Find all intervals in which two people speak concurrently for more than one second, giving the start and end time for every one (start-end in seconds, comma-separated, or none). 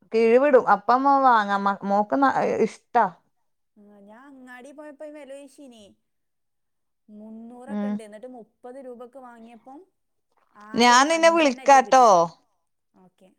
10.8-12.1